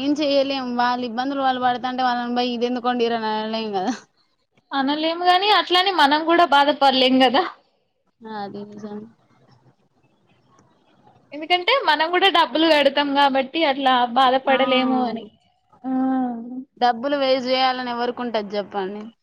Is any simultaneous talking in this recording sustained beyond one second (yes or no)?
no